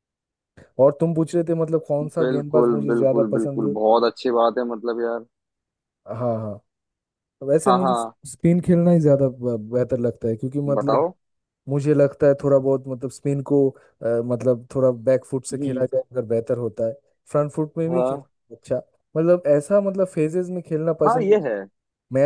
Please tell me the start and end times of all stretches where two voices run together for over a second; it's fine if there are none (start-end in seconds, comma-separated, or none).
2.2-3.8